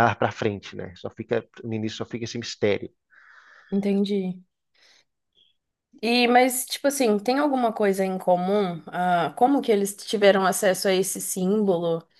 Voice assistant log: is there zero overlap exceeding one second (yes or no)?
yes